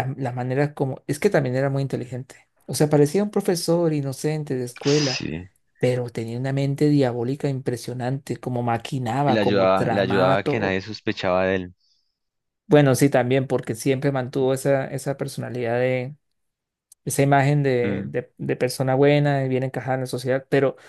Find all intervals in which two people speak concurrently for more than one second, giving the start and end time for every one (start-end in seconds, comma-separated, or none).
9.3-10.8